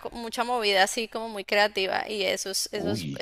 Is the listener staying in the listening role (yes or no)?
yes